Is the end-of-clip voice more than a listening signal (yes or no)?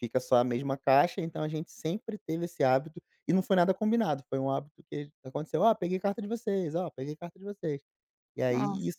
no